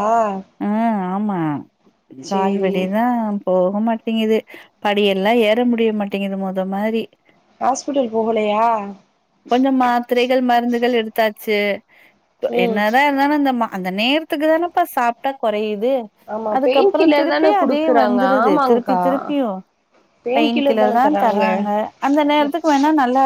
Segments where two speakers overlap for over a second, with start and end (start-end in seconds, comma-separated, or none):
16.6-19.0